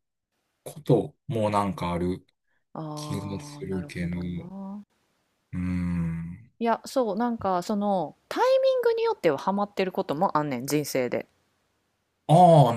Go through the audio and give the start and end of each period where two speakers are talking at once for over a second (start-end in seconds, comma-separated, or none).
2.9-4.2